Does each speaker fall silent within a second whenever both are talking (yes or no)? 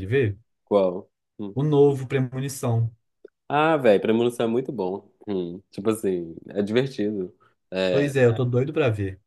yes